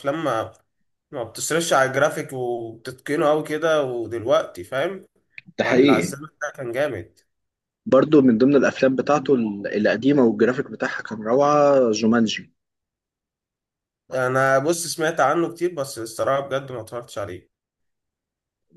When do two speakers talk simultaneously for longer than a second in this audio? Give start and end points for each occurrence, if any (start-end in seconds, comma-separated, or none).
none